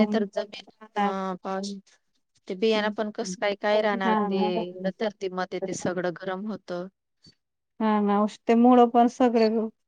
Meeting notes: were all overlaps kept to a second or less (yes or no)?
no